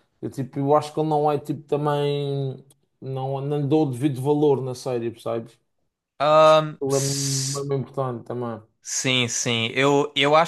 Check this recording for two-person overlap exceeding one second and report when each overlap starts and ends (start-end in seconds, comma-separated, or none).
6.3-7.7